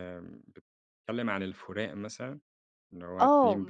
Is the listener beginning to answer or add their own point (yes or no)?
yes